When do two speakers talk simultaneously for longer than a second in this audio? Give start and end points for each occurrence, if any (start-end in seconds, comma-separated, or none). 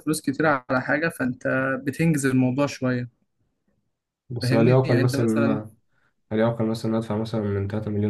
4.4-5.6